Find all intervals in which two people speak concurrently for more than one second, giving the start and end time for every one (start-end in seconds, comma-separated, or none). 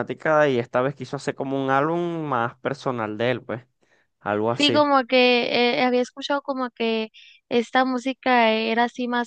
none